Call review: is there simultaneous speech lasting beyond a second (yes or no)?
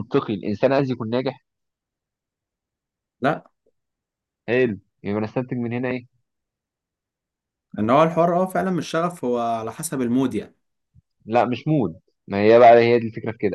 no